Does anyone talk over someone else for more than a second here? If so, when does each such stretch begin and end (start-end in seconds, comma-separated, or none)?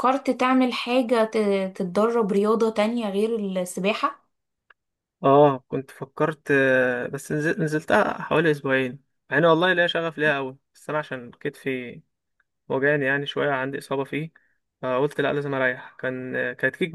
none